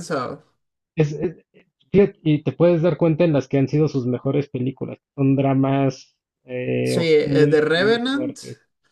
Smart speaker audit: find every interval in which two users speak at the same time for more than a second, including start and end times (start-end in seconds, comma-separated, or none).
6.9-8.4